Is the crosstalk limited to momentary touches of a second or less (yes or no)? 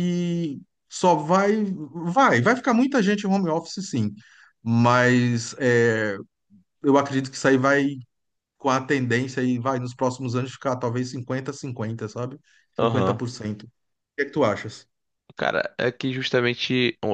yes